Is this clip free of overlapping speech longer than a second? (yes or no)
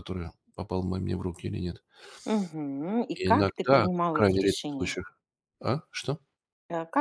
no